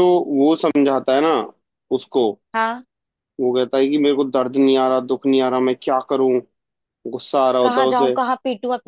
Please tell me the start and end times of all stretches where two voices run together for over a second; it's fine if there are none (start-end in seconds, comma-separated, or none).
none